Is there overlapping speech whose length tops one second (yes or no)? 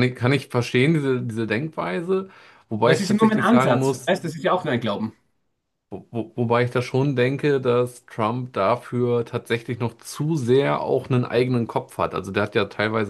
yes